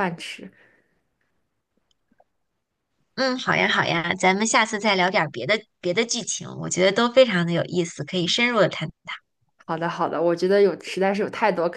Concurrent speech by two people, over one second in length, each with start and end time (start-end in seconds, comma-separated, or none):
none